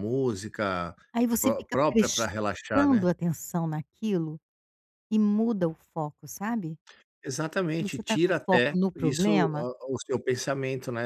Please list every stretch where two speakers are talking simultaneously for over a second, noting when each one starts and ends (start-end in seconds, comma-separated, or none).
1.4-3.1, 7.8-9.7